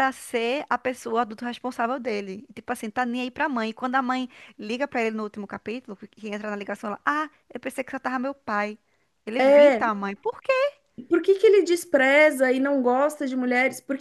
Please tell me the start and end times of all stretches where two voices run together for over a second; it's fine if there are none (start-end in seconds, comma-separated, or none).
none